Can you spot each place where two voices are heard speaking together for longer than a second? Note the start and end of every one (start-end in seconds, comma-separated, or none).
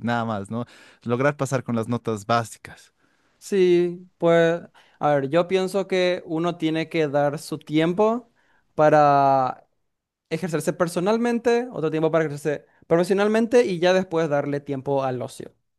none